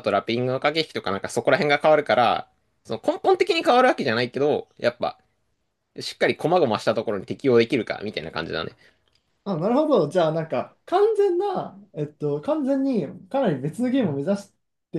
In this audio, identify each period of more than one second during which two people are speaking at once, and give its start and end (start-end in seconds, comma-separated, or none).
none